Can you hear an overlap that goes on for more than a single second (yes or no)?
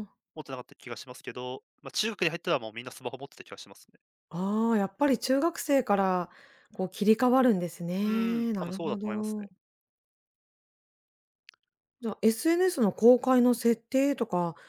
yes